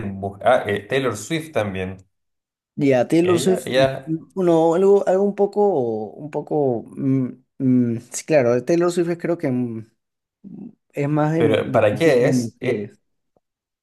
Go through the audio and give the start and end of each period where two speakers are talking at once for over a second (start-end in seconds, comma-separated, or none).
11.4-12.9